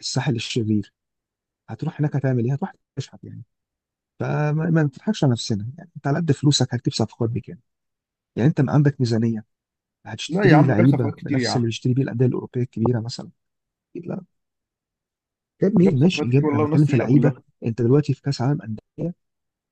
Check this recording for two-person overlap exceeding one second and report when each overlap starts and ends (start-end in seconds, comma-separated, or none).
10.3-11.7, 15.8-17.4